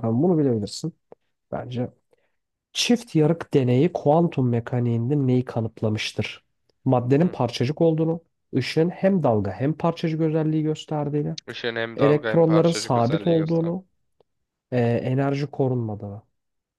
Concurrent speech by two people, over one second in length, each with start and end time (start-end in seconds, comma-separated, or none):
12.0-13.8